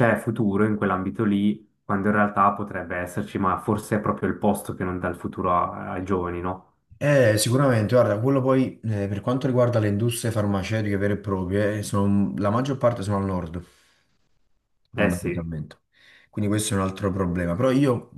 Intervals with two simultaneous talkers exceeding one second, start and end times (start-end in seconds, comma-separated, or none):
none